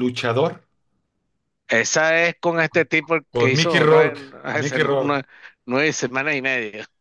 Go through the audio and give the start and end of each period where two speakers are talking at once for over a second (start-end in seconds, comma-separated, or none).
3.3-5.2